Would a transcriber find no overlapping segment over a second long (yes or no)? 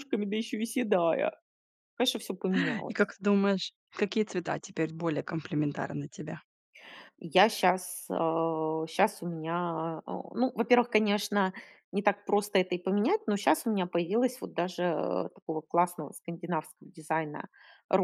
yes